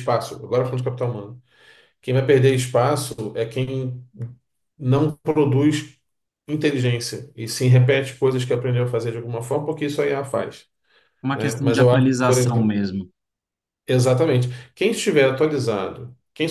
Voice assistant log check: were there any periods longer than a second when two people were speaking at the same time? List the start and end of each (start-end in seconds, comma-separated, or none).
11.3-12.7